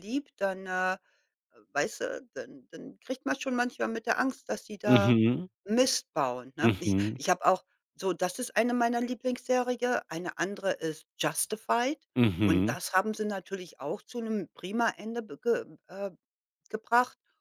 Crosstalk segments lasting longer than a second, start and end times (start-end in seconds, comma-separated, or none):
none